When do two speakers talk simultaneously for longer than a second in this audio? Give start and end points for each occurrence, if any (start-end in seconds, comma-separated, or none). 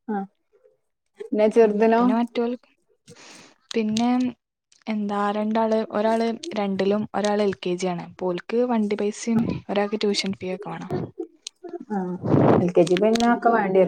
none